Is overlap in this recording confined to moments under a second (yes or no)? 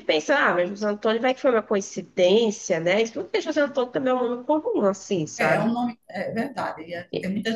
yes